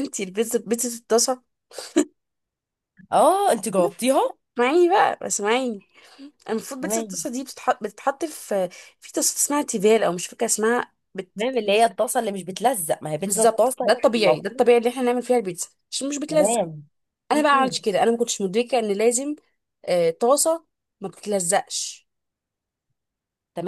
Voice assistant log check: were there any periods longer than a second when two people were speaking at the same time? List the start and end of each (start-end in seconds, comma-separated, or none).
13.2-14.7